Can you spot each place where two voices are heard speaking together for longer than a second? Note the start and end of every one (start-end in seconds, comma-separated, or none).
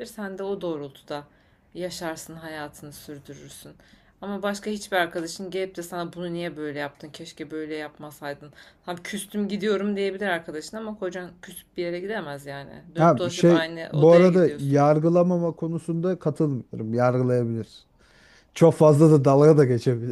13.0-14.8